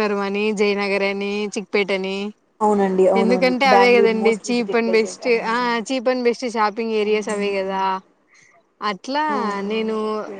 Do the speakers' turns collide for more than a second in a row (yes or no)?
yes